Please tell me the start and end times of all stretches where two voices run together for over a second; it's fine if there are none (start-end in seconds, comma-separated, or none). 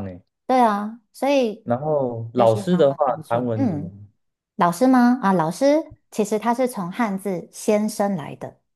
2.4-3.9